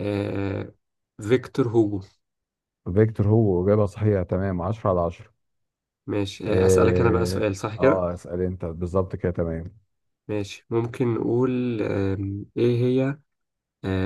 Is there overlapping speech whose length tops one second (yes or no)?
yes